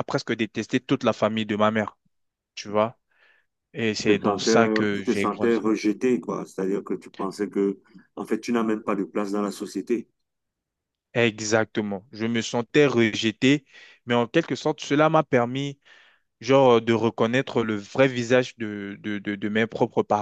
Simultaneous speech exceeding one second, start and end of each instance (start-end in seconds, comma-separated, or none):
4.1-5.6